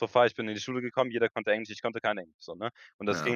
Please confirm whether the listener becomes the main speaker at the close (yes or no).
yes